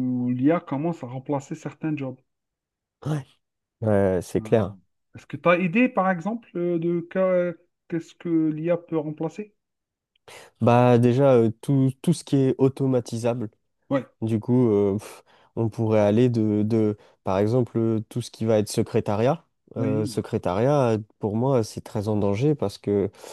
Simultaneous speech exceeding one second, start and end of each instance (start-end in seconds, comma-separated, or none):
none